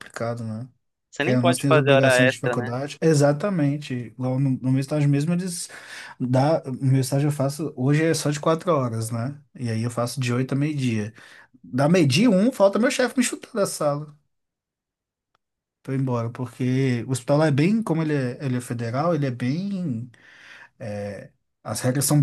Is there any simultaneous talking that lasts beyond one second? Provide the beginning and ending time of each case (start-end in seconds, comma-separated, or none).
1.2-2.7